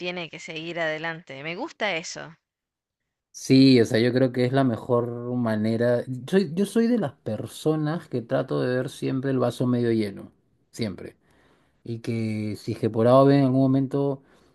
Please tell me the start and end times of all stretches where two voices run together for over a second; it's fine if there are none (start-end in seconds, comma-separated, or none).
none